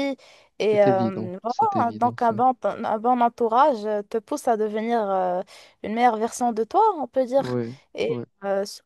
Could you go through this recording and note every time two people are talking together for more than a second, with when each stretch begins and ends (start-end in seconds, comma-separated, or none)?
0.7-2.3